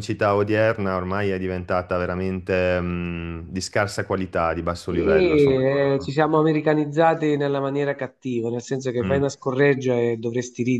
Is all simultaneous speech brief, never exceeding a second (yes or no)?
no